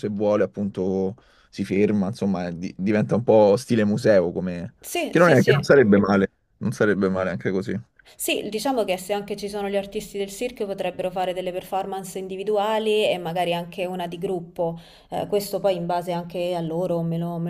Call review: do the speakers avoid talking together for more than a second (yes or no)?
yes